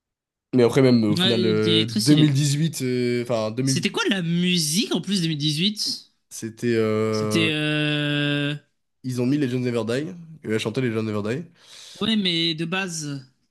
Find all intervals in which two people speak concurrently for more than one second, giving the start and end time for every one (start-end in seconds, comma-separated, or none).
1.1-2.4